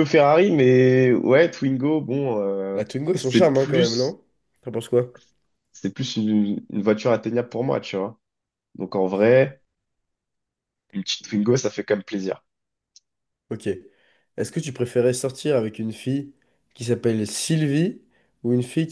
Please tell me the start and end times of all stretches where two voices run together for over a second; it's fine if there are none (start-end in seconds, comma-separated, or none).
2.7-4.2